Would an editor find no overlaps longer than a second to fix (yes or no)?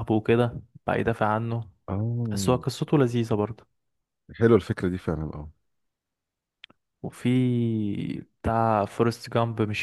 yes